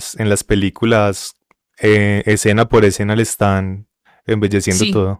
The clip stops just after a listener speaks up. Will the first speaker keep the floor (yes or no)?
no